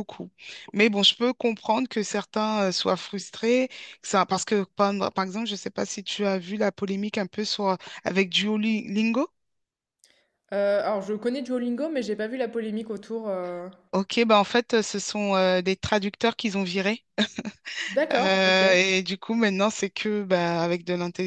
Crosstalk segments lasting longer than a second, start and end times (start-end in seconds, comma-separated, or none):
none